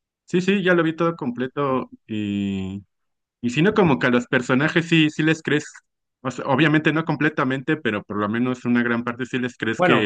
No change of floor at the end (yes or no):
yes